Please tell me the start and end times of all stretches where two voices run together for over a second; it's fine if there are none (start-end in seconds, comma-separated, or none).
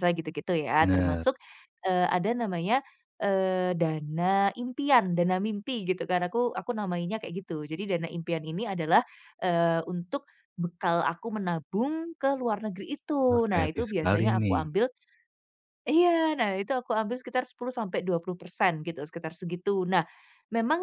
13.3-14.6